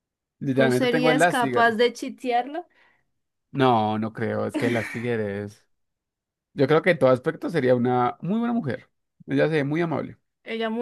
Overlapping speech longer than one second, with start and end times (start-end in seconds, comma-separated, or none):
0.5-1.8